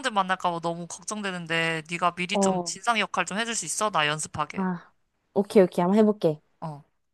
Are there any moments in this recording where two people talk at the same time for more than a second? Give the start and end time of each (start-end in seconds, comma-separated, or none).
none